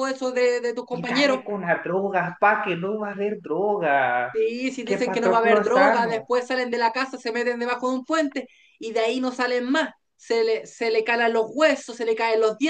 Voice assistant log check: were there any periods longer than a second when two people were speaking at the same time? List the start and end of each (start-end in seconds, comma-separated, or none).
4.8-6.3